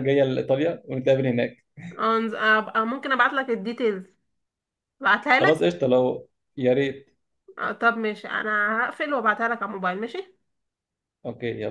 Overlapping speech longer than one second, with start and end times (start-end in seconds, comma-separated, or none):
none